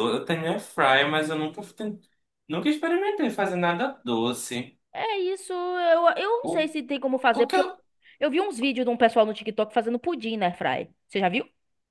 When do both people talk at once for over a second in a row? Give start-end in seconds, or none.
none